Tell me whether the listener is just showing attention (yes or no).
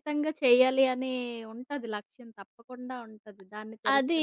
no